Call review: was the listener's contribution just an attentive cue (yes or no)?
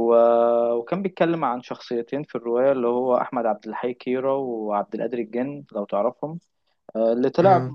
yes